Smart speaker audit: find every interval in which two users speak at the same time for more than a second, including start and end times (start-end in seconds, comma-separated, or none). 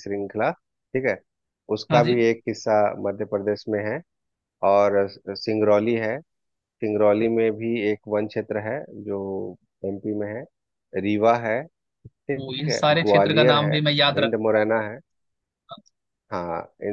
12.4-14.6